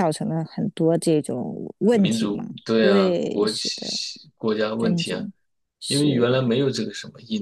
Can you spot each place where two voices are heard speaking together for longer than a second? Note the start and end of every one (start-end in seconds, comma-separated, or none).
1.9-4.0